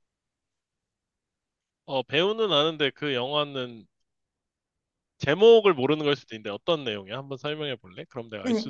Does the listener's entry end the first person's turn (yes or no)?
yes